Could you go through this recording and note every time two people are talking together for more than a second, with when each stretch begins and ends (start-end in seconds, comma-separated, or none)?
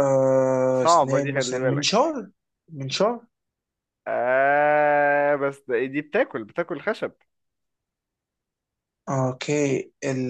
0.8-2.1